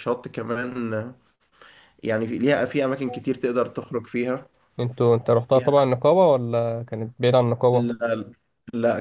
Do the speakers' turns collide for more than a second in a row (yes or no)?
no